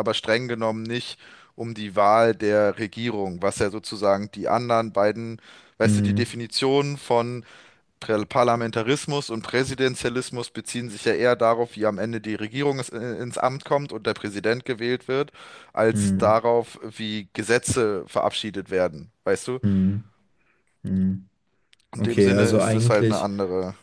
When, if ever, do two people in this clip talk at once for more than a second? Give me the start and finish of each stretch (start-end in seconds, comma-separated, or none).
22.0-23.3